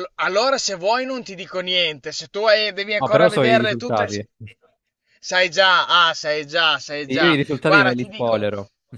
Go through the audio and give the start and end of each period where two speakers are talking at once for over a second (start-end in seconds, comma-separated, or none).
3.0-4.2, 7.2-8.5